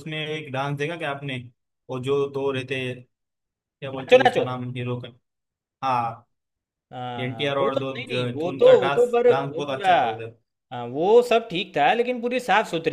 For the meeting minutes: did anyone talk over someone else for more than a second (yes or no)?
yes